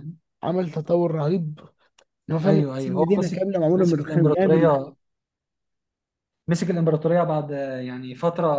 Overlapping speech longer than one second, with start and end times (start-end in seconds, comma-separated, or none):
2.4-4.7